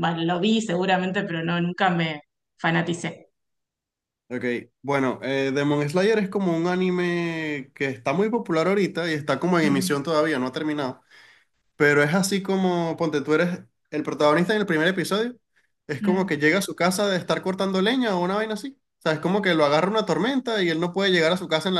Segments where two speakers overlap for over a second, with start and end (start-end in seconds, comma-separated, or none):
none